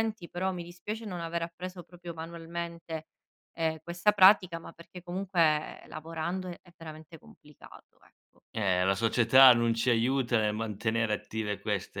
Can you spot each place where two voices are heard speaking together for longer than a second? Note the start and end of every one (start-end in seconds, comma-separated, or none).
none